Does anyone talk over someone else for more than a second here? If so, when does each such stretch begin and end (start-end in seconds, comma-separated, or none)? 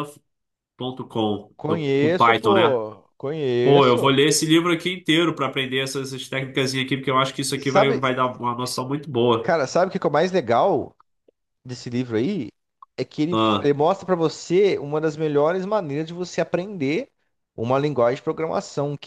1.6-2.8